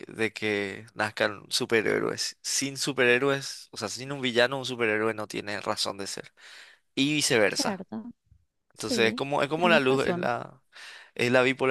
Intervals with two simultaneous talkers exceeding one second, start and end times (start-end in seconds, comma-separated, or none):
8.8-10.3